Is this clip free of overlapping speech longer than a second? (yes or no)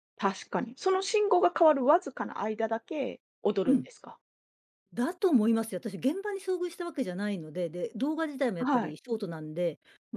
yes